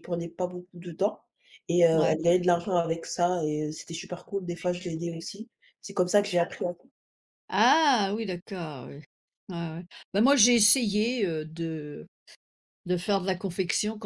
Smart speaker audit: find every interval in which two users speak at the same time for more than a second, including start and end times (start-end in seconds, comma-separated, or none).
none